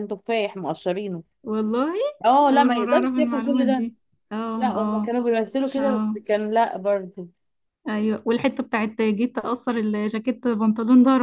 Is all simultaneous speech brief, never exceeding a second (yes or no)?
no